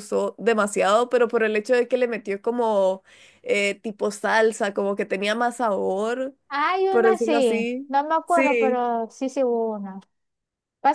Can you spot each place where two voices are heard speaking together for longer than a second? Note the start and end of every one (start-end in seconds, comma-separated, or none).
6.9-8.8